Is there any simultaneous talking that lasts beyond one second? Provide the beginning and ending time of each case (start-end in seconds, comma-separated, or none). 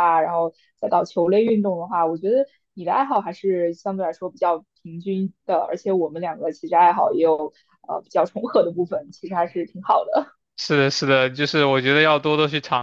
none